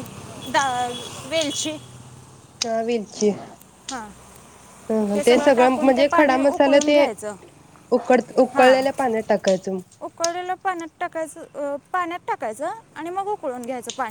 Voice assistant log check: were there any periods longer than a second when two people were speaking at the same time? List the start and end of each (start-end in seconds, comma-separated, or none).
5.1-7.0